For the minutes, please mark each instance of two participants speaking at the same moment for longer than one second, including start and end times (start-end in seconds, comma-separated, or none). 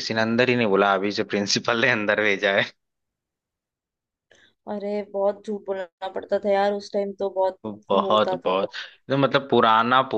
none